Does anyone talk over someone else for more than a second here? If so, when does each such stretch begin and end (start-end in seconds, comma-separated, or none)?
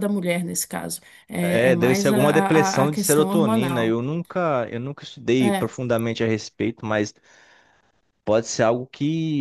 1.4-4.0